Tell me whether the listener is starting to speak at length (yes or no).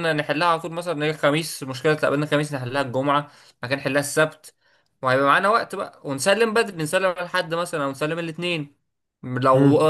no